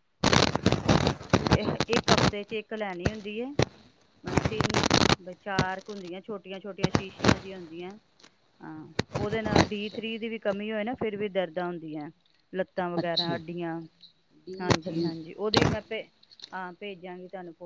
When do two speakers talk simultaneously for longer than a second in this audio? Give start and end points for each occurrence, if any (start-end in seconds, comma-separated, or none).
none